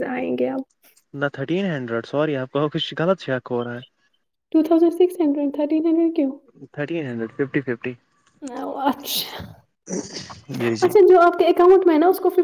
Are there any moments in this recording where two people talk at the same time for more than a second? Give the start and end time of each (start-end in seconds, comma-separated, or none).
none